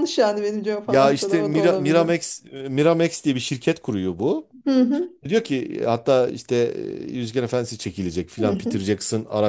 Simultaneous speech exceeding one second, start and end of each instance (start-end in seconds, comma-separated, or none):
0.9-2.1